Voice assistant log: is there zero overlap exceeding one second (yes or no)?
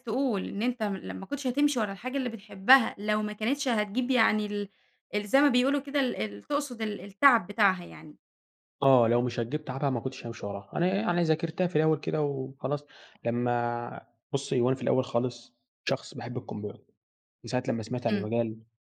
yes